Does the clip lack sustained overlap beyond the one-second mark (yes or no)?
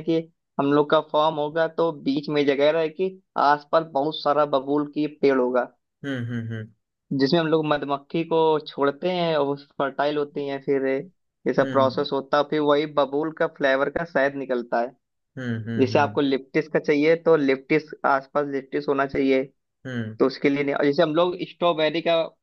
yes